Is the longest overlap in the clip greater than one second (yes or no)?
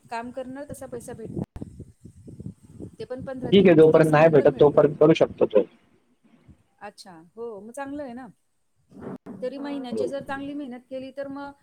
yes